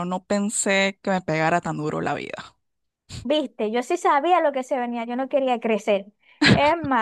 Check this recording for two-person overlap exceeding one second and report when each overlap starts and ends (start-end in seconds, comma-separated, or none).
none